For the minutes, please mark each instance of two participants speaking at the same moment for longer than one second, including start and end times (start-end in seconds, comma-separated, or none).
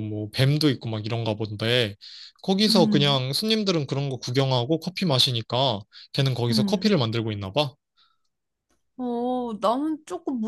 none